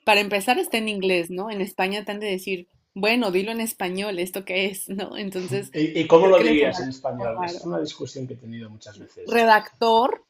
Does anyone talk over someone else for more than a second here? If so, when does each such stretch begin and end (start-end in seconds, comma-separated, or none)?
6.2-7.7